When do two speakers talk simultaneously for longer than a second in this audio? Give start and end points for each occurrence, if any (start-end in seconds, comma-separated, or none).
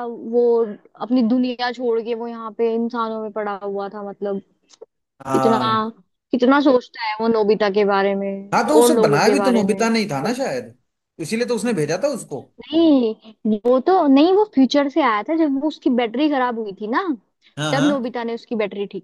8.5-10.4